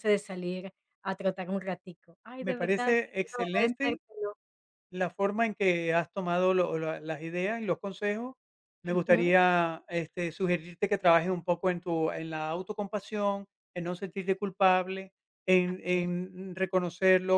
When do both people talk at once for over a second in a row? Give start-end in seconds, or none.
2.4-4.0